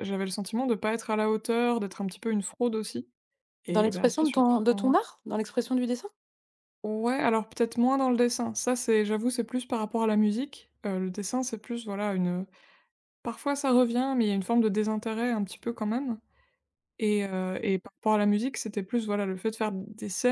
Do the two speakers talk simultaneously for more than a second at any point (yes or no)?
yes